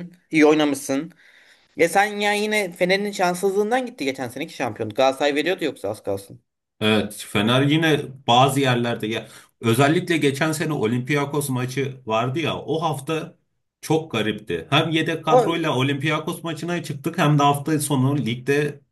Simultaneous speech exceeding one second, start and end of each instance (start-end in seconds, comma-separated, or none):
none